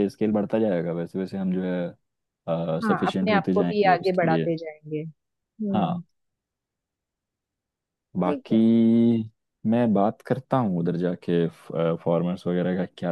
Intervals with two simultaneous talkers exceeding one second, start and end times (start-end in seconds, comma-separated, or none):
2.8-4.5